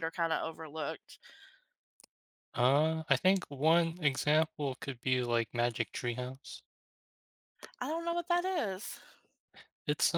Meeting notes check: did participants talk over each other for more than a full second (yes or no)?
no